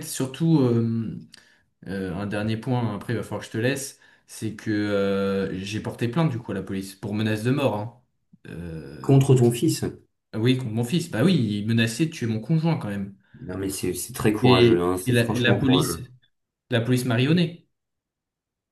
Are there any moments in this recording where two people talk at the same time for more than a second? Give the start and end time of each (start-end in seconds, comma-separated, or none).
14.4-16.0